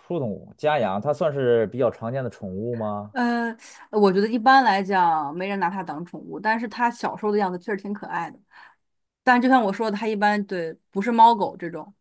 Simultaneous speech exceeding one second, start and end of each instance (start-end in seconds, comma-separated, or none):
none